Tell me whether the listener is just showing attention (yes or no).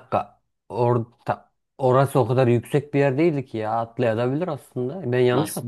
no